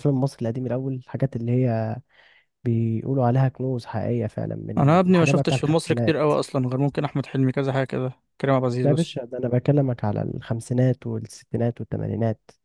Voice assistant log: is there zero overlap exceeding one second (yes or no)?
no